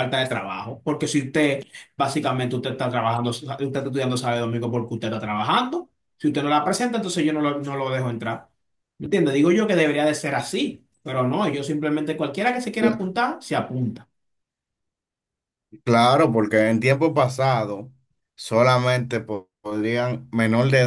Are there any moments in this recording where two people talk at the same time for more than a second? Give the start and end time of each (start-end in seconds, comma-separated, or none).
none